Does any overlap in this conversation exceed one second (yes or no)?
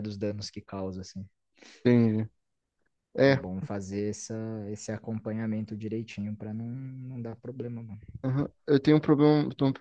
no